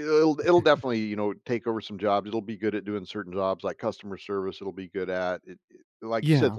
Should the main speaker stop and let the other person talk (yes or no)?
no